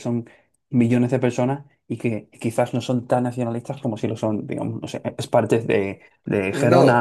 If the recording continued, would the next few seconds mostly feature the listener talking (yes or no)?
yes